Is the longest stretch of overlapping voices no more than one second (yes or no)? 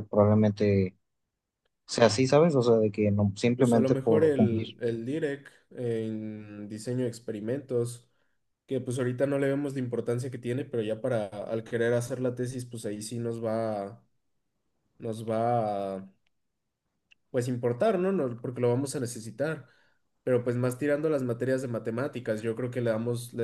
no